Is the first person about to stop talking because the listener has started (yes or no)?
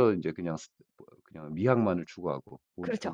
yes